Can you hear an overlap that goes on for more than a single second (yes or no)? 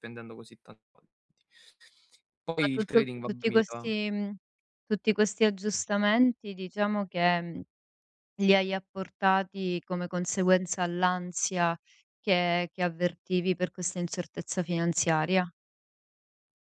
yes